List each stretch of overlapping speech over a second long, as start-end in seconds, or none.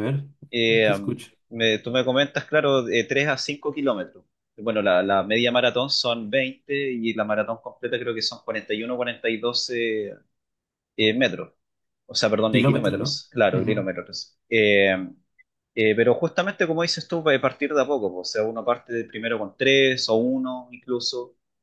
12.5-13.9